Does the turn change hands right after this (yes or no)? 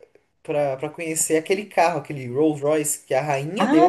yes